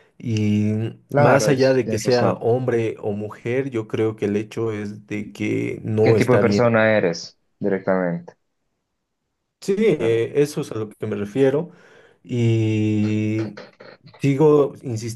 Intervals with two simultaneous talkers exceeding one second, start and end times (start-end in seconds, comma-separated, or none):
1.1-2.4